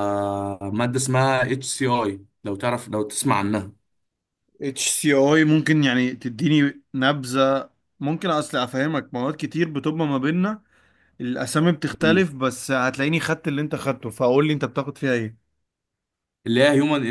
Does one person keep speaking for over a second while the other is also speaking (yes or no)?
no